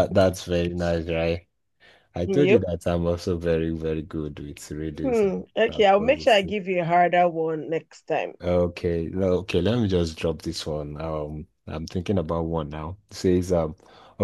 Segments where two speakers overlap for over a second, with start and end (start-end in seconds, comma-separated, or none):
5.0-6.6